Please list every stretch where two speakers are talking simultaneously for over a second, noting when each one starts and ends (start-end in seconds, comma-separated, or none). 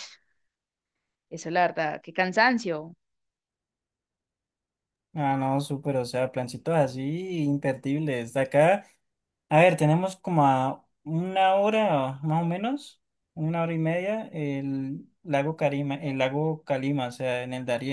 none